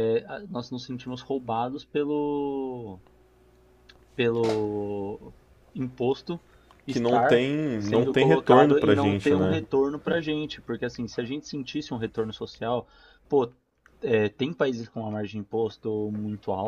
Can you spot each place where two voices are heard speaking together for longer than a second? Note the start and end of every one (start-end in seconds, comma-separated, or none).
6.9-9.6